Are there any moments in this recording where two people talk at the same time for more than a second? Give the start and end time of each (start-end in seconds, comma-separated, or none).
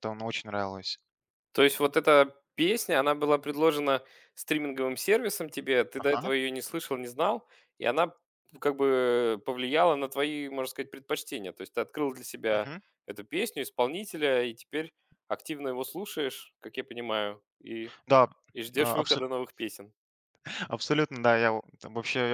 none